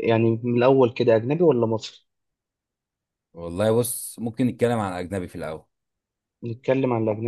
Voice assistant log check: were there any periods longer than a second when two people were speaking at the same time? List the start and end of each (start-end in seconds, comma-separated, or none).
none